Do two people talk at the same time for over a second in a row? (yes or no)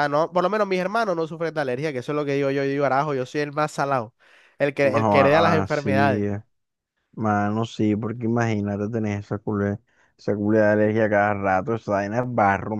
yes